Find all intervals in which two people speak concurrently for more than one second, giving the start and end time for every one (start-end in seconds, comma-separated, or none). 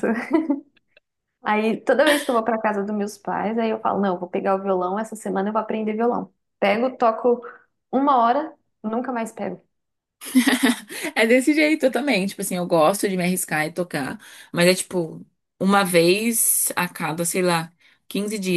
none